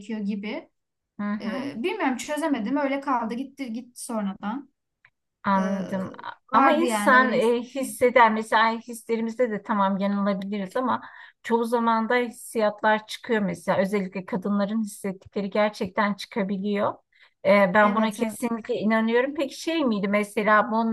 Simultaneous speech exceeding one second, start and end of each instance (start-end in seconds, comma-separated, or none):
6.5-8.0